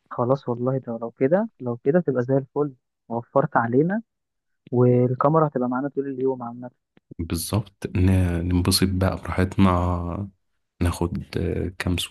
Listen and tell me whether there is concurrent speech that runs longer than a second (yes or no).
no